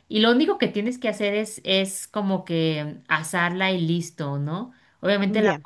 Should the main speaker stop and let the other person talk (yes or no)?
no